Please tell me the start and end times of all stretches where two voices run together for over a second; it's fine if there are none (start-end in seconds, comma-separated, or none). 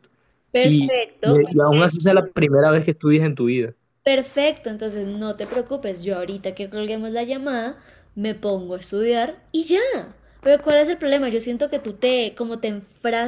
0.6-1.9